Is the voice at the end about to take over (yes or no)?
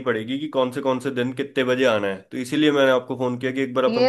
yes